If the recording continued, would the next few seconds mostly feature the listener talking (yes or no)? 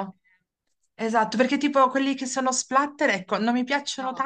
no